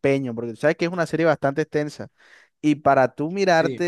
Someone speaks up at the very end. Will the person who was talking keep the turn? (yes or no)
yes